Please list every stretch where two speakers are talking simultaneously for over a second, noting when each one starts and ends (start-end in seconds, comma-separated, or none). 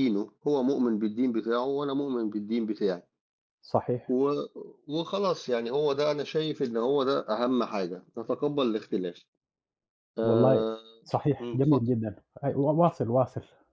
none